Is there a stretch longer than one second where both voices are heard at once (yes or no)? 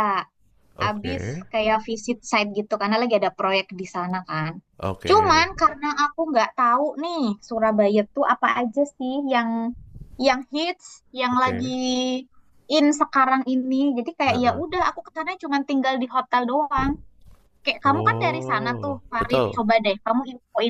yes